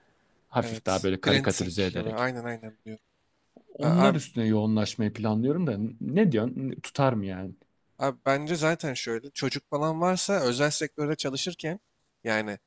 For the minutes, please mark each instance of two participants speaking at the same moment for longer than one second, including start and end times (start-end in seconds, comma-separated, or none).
0.6-2.3